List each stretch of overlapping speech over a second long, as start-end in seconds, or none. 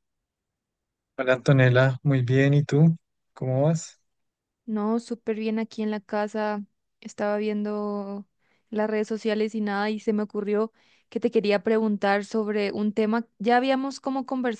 none